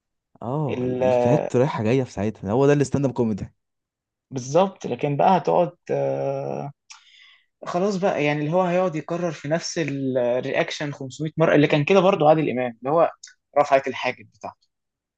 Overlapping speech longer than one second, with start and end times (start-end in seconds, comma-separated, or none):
none